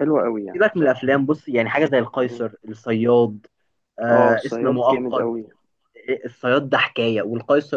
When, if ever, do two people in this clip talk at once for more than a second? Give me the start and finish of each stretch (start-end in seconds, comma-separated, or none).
4.1-5.3